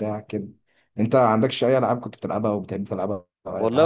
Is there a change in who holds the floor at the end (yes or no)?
yes